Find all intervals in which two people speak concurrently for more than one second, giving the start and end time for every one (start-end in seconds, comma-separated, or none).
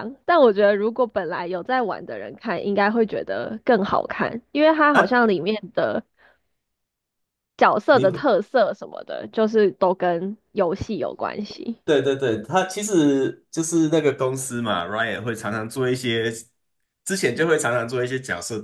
none